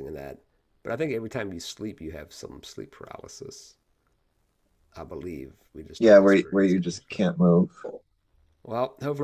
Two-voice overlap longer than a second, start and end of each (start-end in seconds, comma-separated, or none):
6.0-7.2